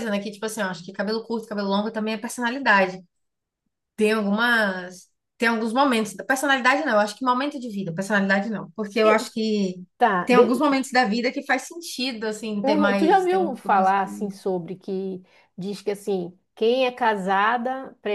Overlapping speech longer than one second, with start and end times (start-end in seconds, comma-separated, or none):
12.6-13.9